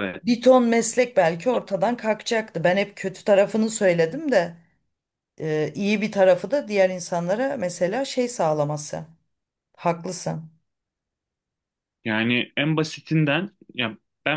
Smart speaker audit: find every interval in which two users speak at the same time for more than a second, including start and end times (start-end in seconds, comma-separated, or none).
none